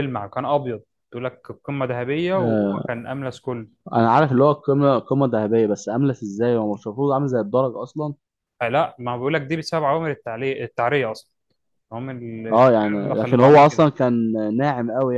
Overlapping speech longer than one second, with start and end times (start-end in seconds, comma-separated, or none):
12.5-13.9